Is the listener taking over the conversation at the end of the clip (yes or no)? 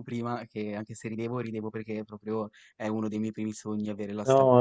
yes